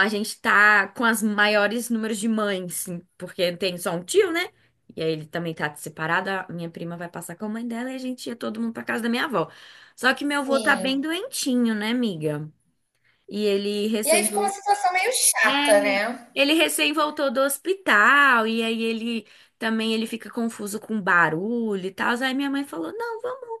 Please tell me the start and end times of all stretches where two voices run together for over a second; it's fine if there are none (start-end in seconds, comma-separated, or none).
none